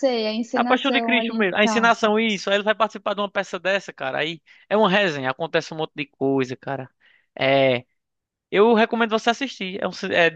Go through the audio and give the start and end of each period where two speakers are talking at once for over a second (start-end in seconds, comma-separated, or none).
0.6-1.9